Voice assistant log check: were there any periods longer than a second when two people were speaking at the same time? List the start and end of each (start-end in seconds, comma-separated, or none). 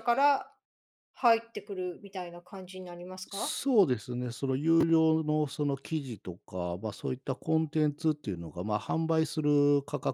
none